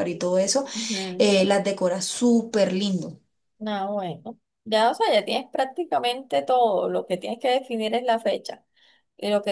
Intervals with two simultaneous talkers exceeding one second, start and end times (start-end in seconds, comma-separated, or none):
none